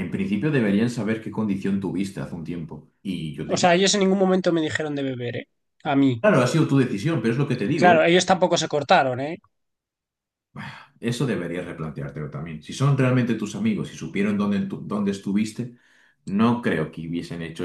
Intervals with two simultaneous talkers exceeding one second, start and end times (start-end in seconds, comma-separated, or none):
none